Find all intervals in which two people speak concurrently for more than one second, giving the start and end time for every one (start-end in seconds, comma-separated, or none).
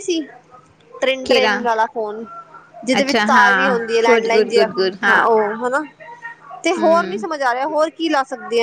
3.0-4.7